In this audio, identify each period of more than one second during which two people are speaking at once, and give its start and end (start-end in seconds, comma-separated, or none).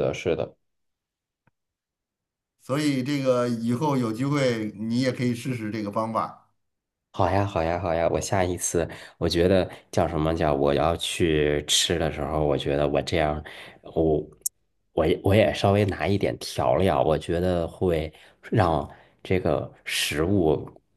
none